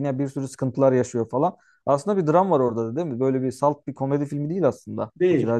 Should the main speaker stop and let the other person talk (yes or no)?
yes